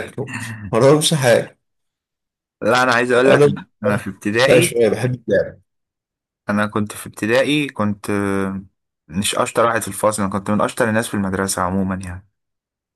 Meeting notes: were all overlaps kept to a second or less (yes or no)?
yes